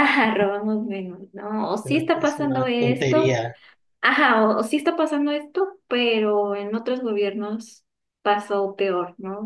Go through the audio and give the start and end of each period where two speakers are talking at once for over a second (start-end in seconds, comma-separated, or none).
1.8-3.4